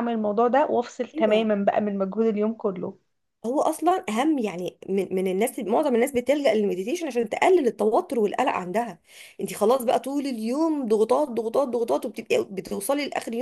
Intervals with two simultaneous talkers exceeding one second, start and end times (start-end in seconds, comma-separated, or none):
none